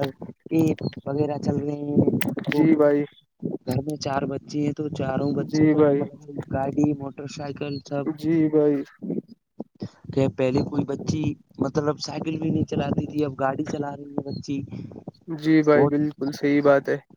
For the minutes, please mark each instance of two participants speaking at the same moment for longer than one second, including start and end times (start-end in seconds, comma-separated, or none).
none